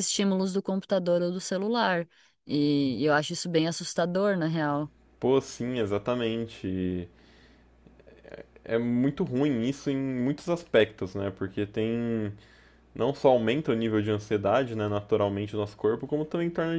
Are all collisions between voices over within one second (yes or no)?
yes